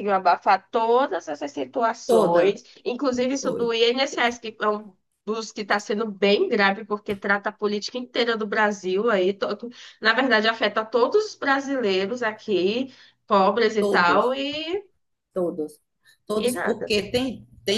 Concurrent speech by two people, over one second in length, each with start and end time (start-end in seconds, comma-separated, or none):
none